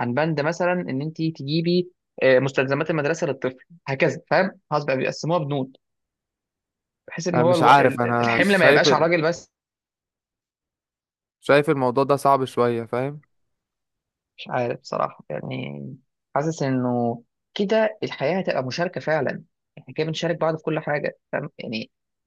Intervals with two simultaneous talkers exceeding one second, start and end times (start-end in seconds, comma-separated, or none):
7.3-9.1